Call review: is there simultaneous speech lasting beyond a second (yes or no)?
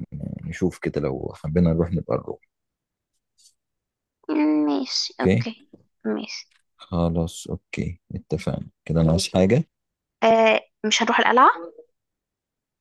no